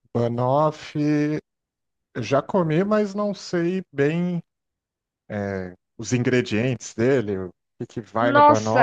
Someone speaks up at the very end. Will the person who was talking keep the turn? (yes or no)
no